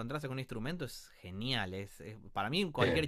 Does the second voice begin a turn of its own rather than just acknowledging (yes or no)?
no